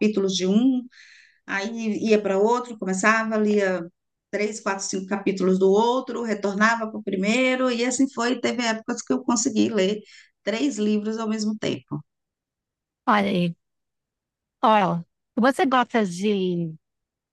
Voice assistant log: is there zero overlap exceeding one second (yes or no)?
yes